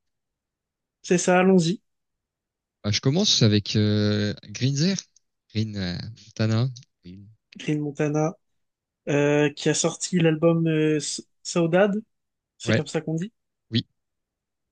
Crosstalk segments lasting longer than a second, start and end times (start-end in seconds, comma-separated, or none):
none